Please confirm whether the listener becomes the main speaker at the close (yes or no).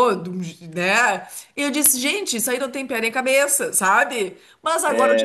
no